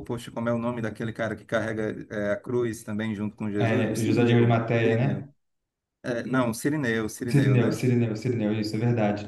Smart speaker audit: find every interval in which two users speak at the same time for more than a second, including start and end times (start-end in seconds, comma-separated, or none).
3.5-5.3